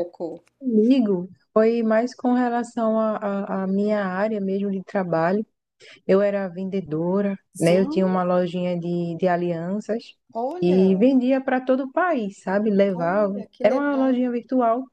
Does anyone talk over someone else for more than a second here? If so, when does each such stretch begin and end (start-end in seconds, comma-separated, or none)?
12.9-14.3